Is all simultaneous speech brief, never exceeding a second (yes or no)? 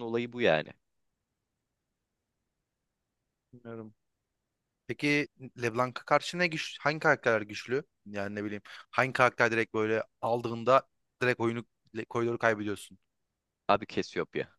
yes